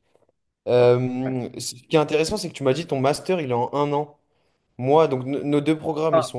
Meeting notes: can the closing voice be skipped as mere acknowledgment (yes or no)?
no